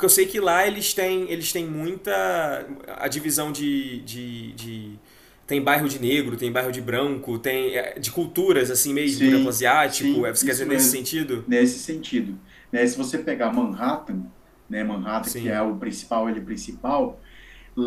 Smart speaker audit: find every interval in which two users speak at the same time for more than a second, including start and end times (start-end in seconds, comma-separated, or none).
9.0-11.1